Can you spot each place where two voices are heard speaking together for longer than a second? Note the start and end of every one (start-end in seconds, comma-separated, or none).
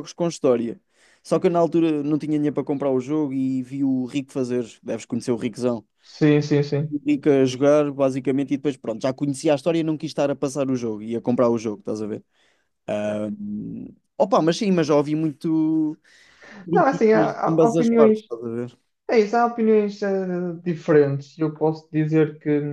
16.7-18.2